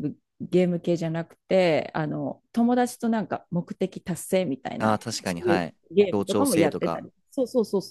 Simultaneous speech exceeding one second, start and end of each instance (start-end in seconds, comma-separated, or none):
4.8-7.1